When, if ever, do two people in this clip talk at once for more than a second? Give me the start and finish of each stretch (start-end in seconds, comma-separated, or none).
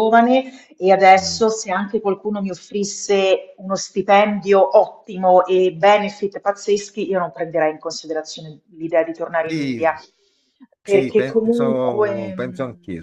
10.8-12.3